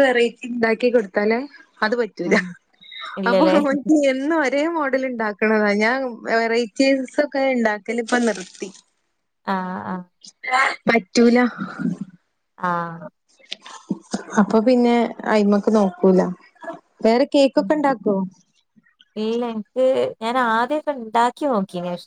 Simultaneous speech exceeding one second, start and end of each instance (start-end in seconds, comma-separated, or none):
none